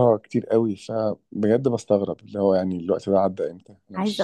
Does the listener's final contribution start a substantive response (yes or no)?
yes